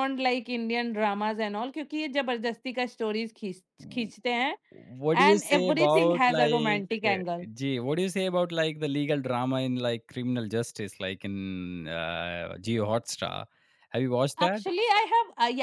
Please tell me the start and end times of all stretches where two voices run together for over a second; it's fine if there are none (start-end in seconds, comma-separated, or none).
5.3-7.2